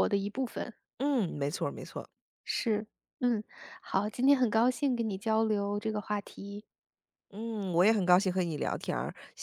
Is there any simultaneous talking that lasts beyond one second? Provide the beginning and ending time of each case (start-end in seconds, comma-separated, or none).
none